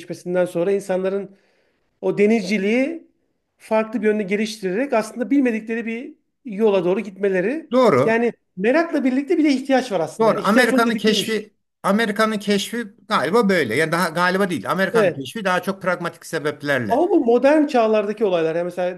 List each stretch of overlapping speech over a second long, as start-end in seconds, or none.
10.2-11.4